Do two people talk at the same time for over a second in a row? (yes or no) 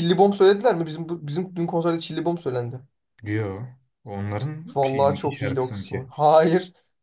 yes